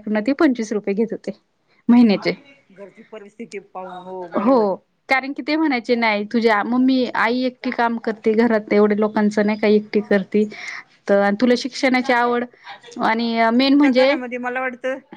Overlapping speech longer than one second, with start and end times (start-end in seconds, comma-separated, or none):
none